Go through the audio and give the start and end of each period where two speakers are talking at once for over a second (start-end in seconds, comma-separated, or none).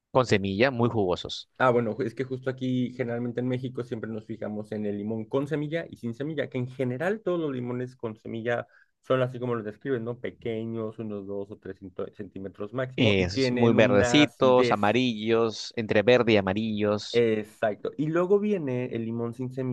13.0-15.0